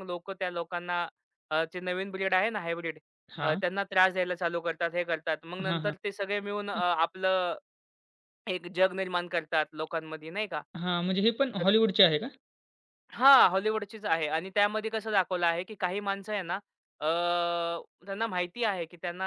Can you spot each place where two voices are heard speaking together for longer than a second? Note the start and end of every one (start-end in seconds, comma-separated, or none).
none